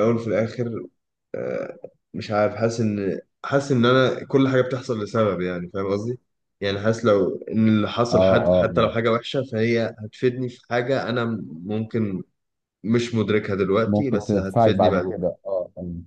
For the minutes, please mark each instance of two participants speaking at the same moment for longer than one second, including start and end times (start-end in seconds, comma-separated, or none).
13.8-15.1